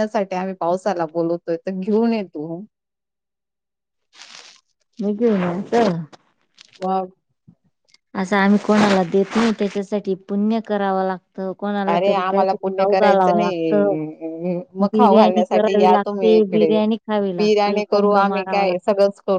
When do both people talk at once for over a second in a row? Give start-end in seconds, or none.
14.9-16.7, 17.4-18.7